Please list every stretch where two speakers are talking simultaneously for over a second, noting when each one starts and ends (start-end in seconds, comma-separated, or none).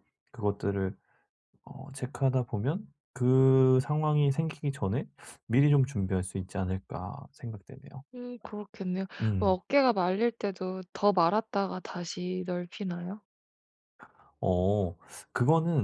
none